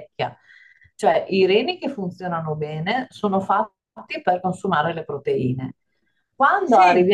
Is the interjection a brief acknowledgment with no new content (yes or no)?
yes